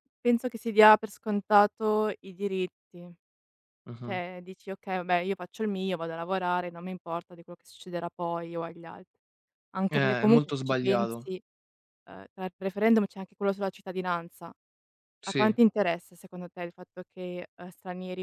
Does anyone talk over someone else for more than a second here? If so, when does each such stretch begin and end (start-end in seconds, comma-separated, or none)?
9.9-11.3